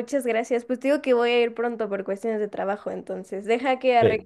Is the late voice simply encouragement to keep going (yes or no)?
yes